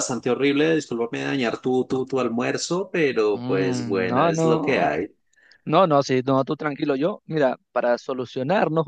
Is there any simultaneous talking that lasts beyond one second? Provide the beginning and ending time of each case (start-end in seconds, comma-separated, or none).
3.3-4.8